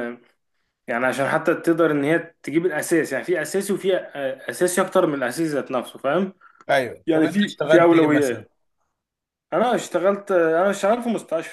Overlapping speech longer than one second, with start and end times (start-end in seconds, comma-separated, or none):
7.1-8.4